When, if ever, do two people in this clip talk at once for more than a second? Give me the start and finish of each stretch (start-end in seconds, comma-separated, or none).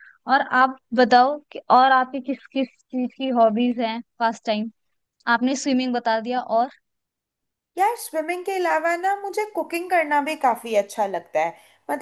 none